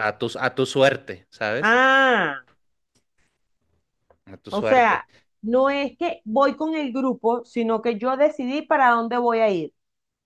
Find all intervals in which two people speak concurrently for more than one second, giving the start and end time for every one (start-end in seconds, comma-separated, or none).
none